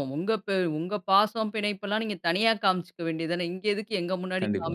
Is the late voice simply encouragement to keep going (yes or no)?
yes